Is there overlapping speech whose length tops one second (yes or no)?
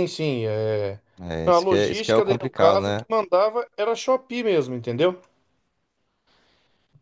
yes